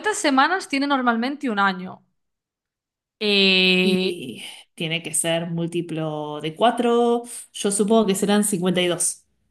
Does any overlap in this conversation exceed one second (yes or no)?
no